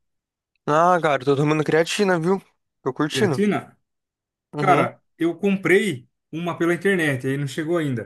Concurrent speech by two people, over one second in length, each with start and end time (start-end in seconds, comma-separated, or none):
none